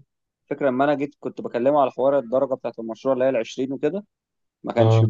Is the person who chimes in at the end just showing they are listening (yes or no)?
yes